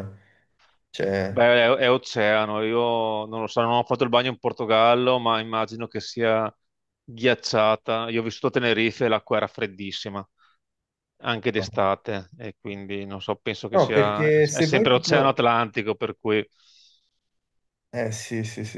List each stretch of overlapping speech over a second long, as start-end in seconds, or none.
13.7-15.4